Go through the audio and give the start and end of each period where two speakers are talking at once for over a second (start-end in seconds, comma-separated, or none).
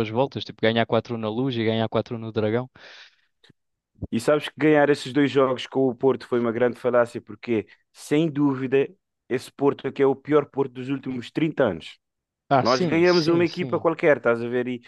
12.6-13.9